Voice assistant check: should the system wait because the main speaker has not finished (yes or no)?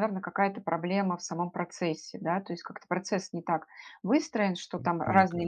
yes